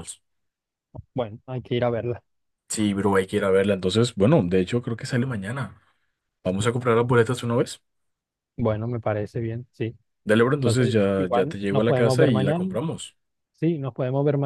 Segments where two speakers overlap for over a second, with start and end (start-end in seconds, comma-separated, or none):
10.6-12.6